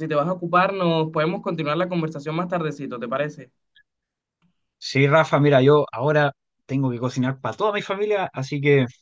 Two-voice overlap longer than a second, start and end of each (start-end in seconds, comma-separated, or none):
none